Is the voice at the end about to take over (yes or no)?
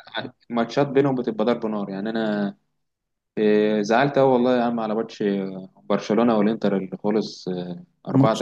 yes